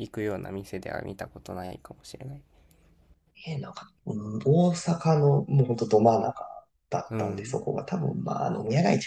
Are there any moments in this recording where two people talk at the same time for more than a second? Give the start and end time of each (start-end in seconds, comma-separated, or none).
none